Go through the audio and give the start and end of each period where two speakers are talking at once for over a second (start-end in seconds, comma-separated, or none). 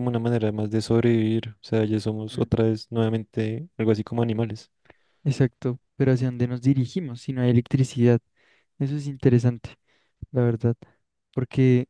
none